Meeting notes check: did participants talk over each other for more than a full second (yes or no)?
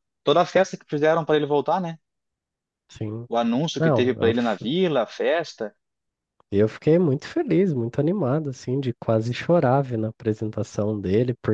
no